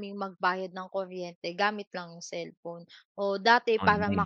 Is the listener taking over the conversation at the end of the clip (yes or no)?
no